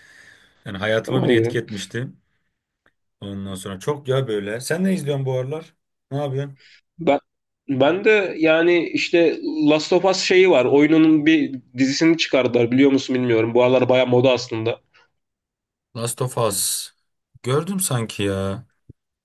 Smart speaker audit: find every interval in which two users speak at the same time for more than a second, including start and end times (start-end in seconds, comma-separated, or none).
none